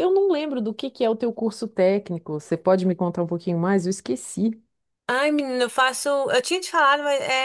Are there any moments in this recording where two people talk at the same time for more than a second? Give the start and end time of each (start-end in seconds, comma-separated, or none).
none